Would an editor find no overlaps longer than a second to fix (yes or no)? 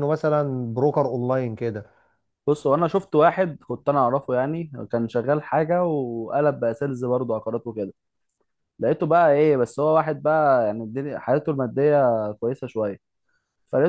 yes